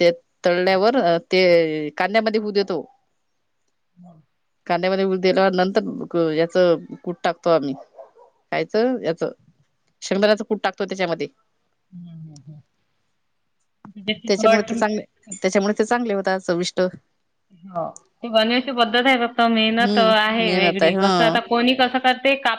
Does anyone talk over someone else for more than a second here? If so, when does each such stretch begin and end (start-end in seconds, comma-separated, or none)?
19.6-21.1